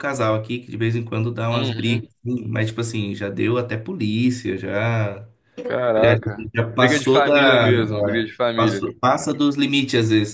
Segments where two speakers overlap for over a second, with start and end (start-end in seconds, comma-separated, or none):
5.9-8.8